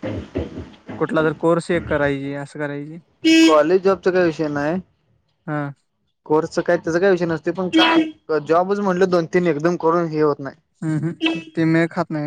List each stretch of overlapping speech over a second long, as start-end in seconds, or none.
none